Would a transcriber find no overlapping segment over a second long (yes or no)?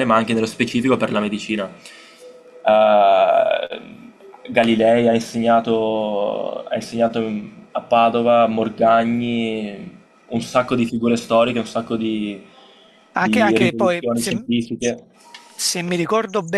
no